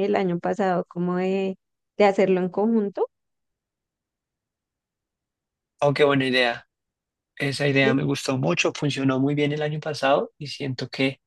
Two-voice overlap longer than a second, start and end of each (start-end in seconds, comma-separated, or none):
none